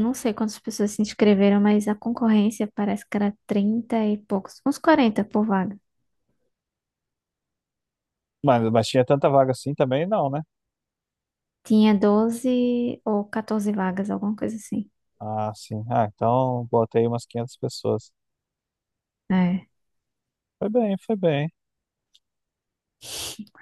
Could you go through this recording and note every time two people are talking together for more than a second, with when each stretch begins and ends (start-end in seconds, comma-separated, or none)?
none